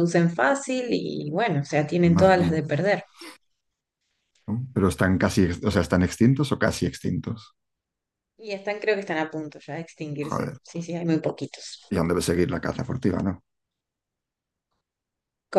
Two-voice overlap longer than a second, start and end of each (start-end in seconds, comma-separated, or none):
none